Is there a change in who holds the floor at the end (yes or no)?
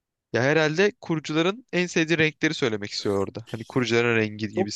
yes